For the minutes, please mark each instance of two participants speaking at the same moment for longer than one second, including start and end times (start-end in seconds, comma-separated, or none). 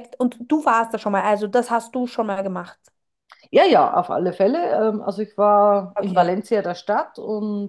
none